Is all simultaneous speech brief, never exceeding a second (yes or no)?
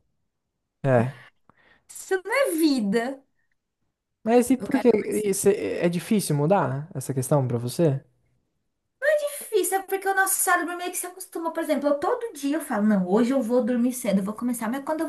yes